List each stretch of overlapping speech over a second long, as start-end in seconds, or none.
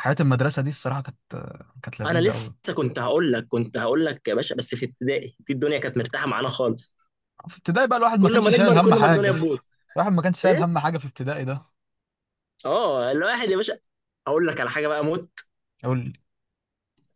8.2-9.4